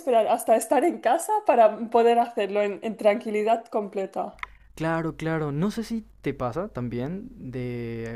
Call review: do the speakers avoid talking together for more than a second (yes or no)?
yes